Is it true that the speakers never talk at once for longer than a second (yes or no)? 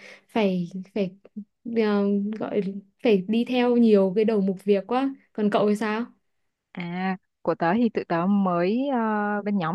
yes